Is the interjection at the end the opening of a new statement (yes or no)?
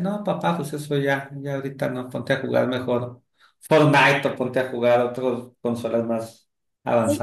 yes